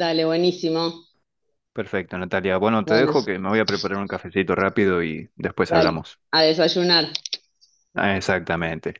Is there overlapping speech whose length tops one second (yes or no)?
no